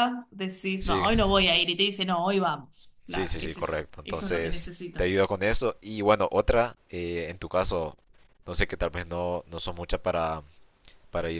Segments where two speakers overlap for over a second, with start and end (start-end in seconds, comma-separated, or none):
3.0-5.0